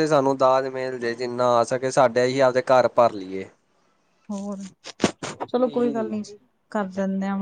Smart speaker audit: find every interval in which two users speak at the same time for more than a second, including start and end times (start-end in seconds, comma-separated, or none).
none